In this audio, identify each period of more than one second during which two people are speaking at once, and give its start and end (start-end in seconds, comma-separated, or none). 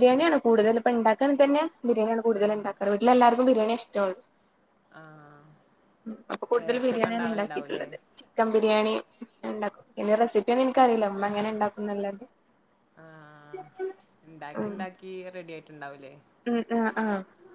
6.6-7.9